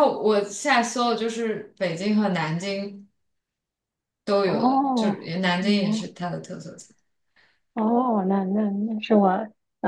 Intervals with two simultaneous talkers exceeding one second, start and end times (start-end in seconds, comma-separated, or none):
4.4-6.1